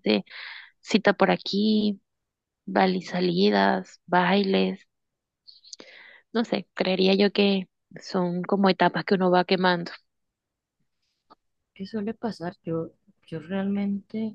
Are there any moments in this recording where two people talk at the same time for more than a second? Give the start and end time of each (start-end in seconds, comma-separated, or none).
none